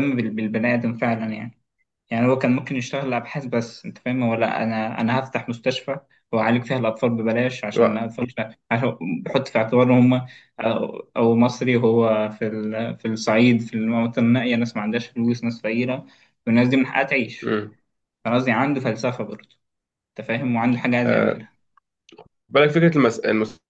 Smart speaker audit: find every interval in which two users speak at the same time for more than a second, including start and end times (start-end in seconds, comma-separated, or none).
none